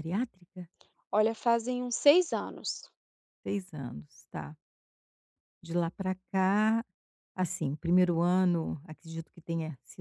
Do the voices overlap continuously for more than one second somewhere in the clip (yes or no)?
no